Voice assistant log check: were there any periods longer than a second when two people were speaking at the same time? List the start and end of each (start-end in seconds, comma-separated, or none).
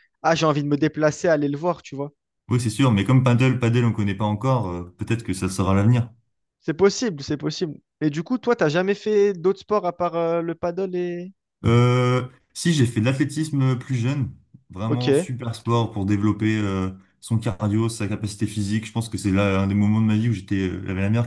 none